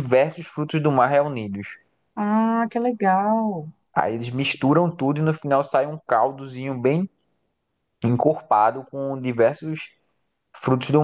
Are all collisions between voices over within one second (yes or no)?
yes